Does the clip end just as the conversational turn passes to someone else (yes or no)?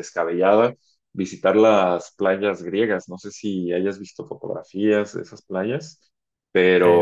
no